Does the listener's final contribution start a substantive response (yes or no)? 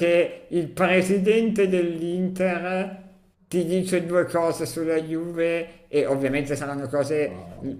no